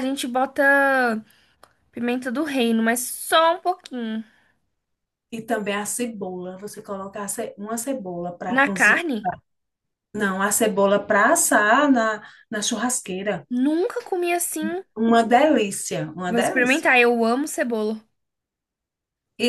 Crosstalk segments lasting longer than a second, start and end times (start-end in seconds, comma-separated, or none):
none